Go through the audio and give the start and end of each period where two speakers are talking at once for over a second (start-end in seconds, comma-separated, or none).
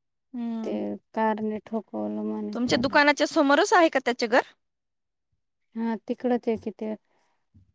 none